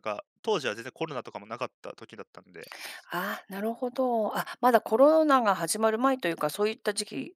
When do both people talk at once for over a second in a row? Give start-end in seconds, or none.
none